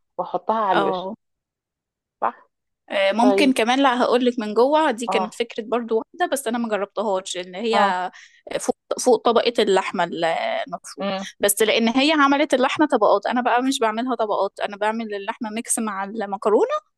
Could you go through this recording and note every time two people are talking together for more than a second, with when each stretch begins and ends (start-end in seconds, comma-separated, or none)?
none